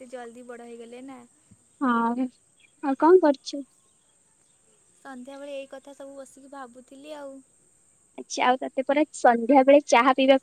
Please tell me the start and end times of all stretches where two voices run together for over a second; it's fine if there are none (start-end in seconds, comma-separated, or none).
none